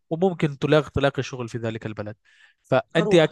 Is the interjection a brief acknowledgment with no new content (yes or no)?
yes